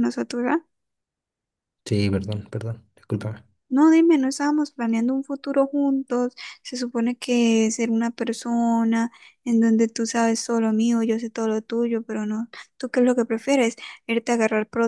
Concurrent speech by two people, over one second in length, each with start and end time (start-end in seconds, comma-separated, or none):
none